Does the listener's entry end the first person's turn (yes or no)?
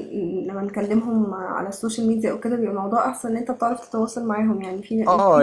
yes